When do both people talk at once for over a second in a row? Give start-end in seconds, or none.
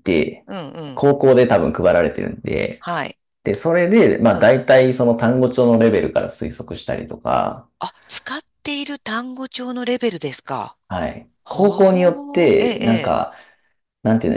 11.4-13.2